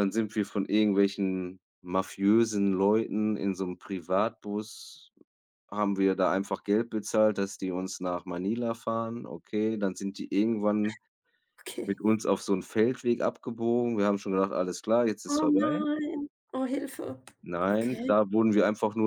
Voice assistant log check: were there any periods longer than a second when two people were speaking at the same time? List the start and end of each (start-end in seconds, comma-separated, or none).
none